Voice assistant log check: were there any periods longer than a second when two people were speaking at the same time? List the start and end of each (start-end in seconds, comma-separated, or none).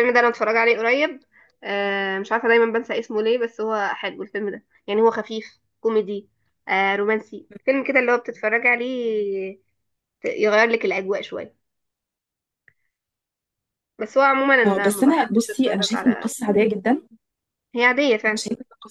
14.7-16.3